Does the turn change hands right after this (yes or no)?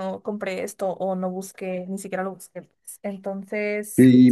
yes